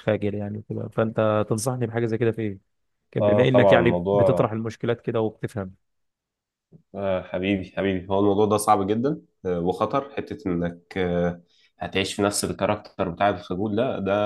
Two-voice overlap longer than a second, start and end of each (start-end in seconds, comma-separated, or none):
3.2-4.5